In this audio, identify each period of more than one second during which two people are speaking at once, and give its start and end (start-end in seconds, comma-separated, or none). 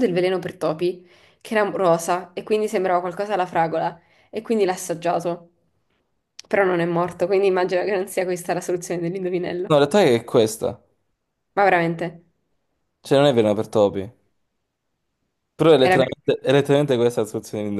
none